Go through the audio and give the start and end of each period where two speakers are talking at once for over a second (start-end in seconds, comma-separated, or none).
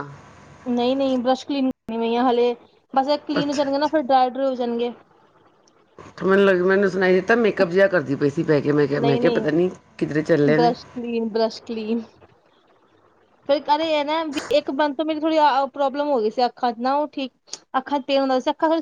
none